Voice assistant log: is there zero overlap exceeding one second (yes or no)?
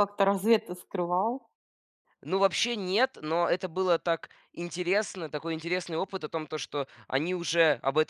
yes